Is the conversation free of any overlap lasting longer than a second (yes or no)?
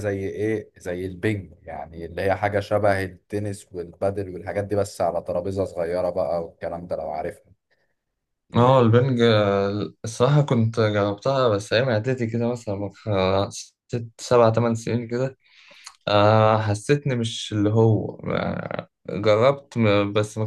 yes